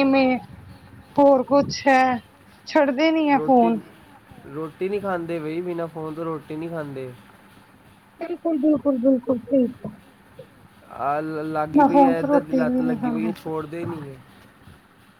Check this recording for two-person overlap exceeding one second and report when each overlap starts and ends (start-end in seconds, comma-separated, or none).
11.8-13.3